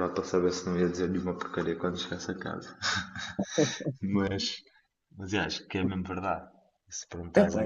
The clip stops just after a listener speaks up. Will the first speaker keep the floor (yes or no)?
yes